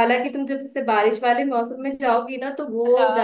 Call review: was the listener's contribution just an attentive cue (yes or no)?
yes